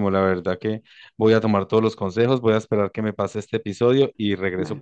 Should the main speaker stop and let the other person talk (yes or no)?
no